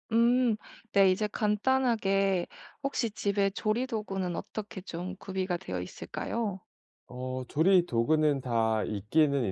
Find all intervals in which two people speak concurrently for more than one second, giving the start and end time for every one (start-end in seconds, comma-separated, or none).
none